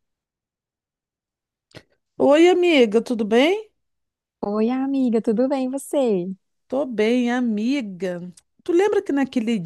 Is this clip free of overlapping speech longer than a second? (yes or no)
yes